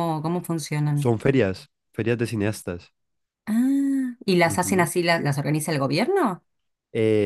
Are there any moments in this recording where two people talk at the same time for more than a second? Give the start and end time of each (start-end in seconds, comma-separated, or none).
none